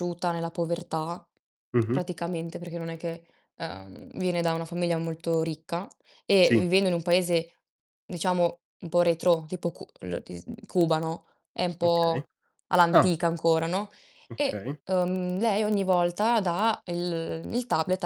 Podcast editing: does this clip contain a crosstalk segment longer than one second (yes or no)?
no